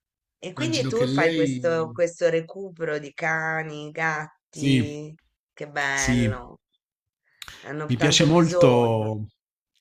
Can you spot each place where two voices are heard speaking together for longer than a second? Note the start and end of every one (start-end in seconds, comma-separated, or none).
0.6-2.0, 7.8-9.1